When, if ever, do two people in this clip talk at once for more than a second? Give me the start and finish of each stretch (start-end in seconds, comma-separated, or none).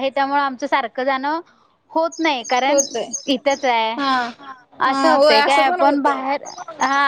4.9-6.2